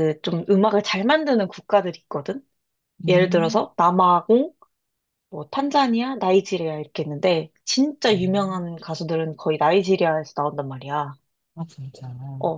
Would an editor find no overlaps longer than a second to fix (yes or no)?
yes